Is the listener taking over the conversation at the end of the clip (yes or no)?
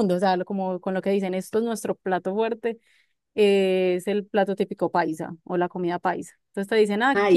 no